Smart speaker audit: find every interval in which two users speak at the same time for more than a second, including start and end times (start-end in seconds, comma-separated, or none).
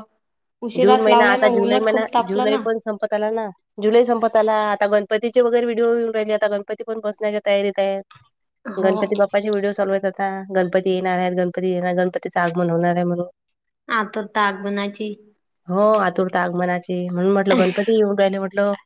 0.8-2.6